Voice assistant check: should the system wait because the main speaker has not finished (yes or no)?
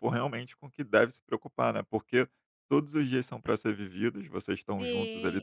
no